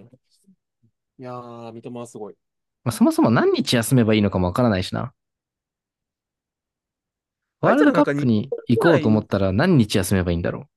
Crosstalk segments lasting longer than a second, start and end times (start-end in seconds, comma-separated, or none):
7.6-9.2